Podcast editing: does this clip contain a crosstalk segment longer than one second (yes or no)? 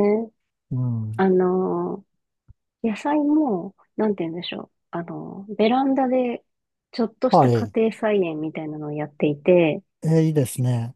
no